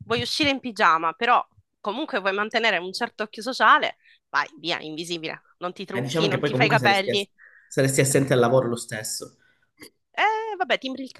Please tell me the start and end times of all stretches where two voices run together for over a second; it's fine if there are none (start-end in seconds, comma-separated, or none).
5.9-7.3